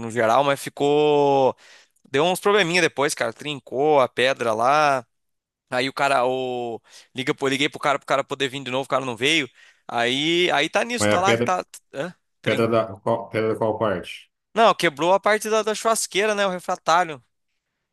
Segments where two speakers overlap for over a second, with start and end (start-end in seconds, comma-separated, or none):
none